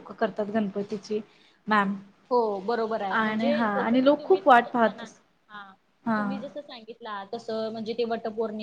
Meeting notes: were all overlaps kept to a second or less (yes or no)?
no